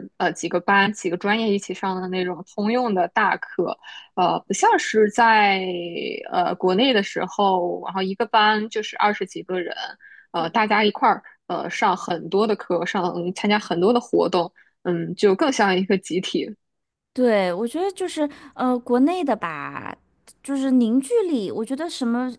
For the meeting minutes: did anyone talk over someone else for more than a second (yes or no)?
no